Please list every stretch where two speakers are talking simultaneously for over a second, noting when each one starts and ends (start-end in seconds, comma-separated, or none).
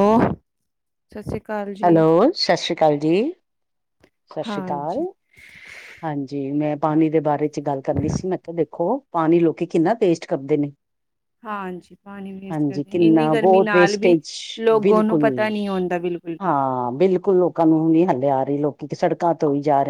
12.5-14.2